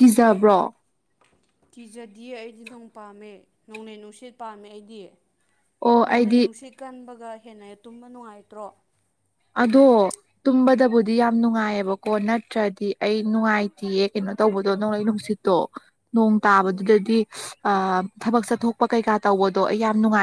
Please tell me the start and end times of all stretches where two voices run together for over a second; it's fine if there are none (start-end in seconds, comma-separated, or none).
none